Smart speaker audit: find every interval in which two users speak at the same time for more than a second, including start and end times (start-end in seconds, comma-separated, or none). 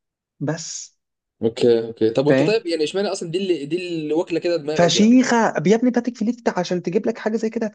none